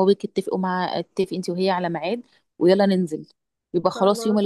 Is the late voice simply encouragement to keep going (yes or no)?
yes